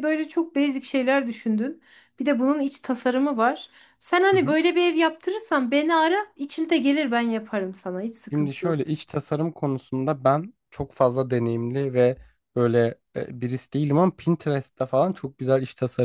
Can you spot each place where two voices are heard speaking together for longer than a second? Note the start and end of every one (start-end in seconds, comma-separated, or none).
none